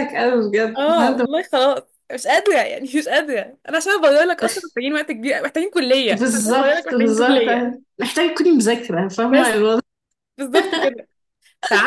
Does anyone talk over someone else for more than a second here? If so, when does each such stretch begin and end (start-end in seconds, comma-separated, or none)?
6.1-7.4